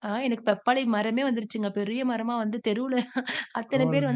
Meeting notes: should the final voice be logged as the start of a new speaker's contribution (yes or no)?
no